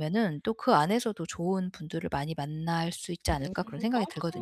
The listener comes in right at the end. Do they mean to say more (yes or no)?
yes